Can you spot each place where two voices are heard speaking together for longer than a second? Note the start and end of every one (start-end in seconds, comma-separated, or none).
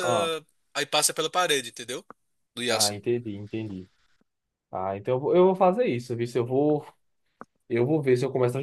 none